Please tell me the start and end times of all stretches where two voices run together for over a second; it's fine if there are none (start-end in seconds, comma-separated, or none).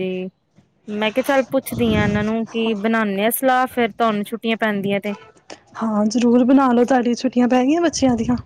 none